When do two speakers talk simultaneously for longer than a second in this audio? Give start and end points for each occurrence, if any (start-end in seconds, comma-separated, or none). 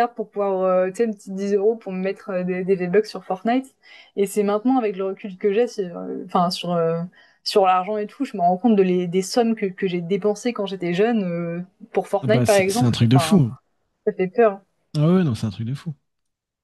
12.2-13.4